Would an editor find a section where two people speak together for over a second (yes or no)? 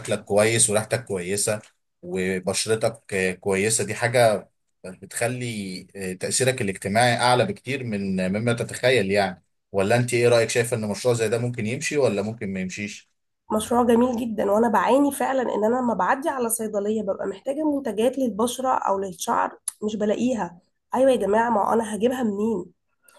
no